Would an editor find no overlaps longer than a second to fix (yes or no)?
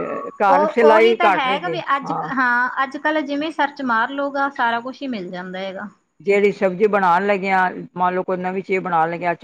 no